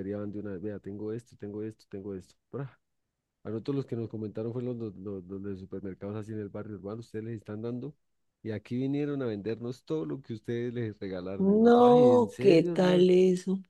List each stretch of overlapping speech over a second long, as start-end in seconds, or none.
11.4-13.0